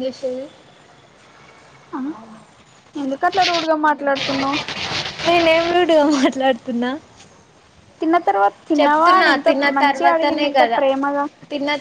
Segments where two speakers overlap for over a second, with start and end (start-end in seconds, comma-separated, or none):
8.8-10.8